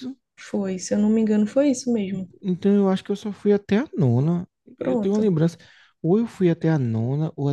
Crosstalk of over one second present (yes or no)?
no